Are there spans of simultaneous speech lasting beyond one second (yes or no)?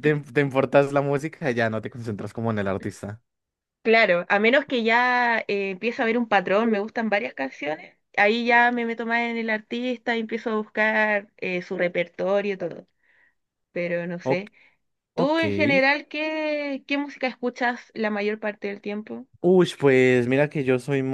no